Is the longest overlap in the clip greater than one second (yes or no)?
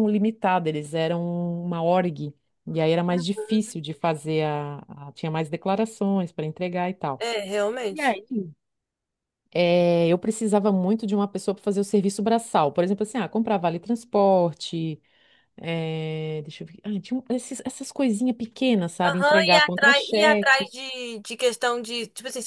yes